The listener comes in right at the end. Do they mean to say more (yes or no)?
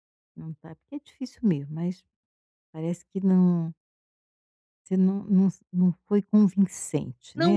yes